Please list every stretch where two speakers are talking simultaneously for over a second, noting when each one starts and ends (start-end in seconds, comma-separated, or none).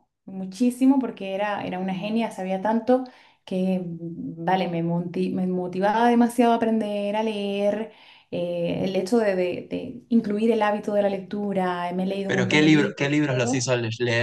12.3-13.7